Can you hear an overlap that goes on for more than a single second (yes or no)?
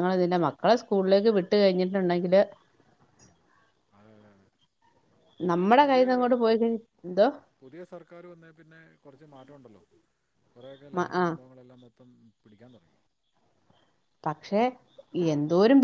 no